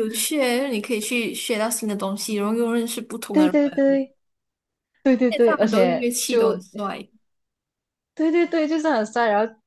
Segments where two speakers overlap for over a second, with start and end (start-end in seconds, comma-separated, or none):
5.3-6.6